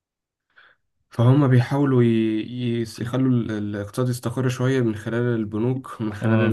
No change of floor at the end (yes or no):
yes